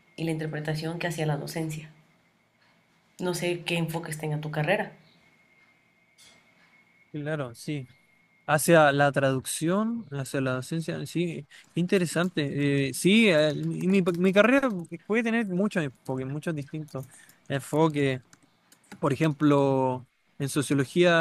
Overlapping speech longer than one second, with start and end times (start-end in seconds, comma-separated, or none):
none